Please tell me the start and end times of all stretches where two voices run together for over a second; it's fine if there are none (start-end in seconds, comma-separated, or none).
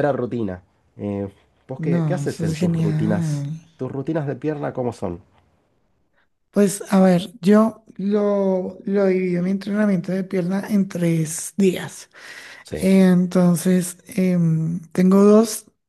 1.8-3.6